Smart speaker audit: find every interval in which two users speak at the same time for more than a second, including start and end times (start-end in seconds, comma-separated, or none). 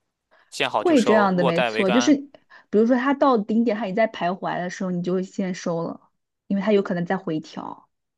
0.8-2.1